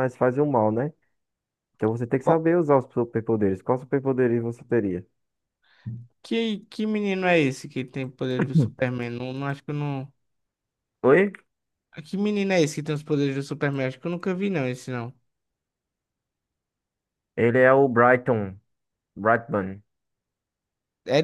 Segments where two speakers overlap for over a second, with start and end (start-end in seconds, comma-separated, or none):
none